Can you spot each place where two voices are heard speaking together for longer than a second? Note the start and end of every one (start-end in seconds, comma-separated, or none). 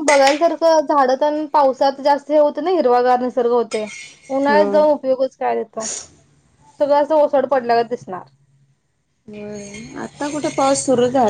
none